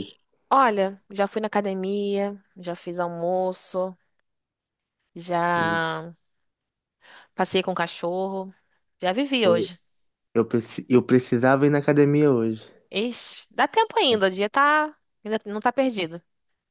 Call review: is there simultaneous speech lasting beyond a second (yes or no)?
no